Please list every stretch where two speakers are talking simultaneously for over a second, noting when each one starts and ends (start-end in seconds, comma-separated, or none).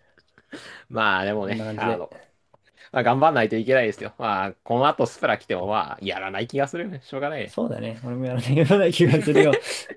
none